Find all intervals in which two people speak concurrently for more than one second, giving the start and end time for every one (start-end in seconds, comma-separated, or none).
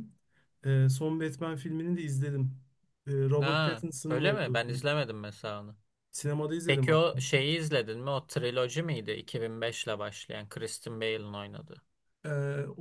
3.4-4.9